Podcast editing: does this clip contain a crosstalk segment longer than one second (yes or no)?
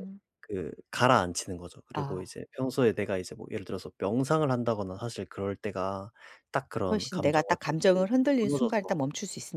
yes